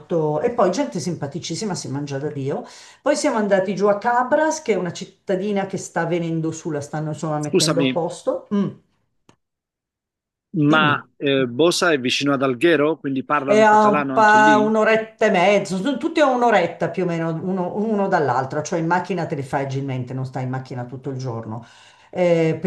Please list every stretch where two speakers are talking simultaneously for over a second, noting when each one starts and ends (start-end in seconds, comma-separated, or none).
13.4-14.7